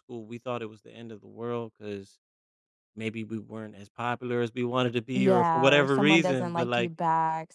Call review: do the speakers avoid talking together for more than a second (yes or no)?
no